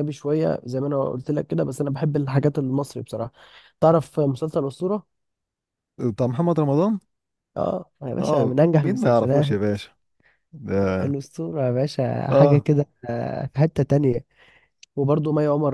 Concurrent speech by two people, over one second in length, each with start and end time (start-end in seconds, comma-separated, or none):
8.2-9.6